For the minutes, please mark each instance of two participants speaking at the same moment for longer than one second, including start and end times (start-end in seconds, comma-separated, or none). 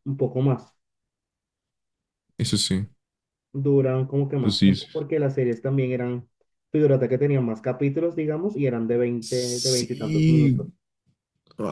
9.2-10.6